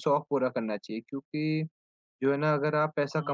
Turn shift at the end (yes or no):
no